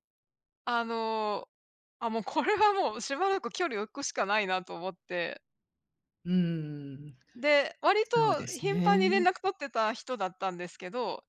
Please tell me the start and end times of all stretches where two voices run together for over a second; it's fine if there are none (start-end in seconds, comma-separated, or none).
8.0-9.3